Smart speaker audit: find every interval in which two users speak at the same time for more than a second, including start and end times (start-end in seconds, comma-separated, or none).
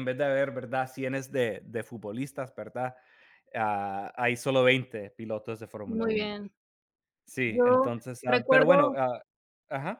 7.5-9.0